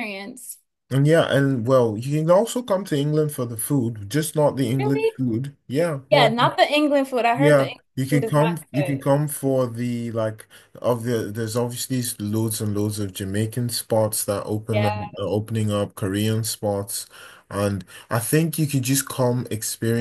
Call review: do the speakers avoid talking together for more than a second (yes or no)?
no